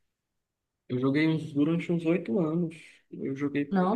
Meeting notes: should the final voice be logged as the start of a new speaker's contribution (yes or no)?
no